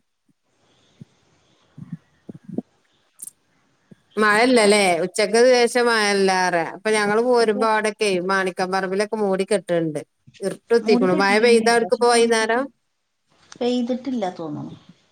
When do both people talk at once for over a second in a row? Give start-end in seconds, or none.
10.8-12.6